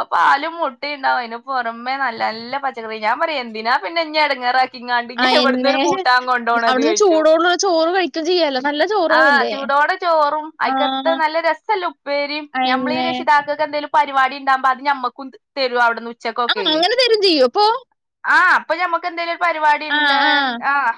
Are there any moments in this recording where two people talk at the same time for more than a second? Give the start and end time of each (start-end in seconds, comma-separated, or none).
none